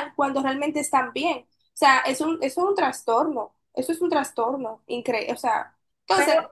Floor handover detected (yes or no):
yes